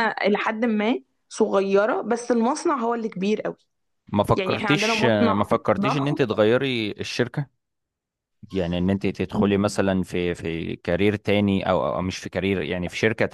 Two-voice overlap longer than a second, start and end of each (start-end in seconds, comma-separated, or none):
4.3-6.2